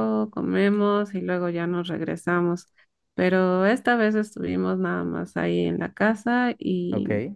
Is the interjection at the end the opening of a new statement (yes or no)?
no